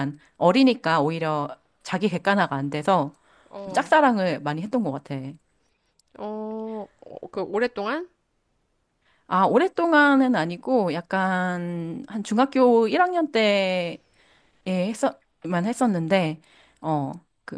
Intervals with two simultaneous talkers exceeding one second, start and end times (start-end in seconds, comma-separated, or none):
none